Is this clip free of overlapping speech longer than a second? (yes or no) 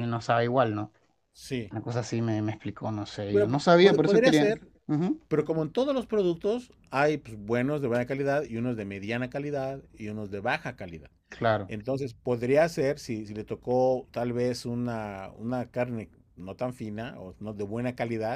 no